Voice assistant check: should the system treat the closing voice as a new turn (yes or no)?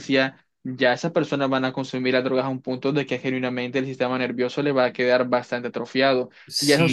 yes